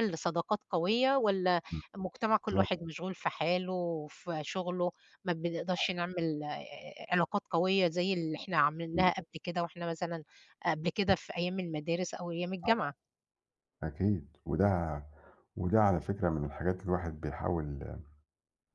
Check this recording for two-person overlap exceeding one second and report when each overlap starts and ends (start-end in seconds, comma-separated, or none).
none